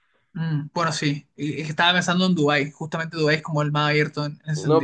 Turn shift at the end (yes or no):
yes